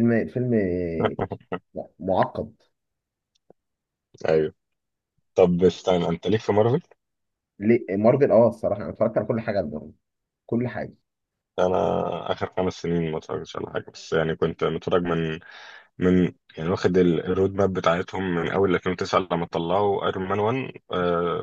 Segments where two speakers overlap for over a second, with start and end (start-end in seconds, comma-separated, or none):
none